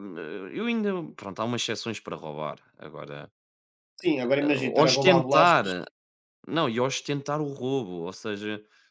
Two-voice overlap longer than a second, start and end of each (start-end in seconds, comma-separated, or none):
4.4-5.7